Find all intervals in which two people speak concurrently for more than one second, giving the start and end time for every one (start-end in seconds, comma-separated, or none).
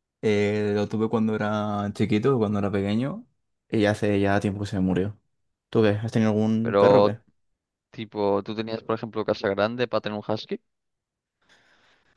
none